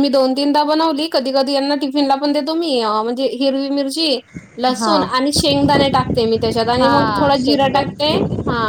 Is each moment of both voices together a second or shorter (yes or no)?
no